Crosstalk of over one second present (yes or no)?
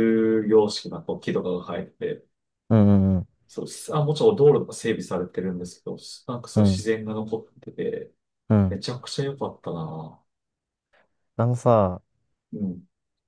no